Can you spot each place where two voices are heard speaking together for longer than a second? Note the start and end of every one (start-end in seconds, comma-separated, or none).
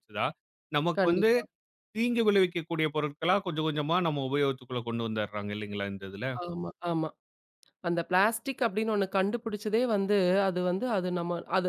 none